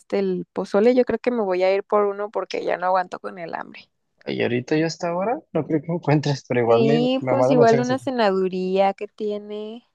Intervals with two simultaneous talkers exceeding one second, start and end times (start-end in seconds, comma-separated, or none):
6.7-8.0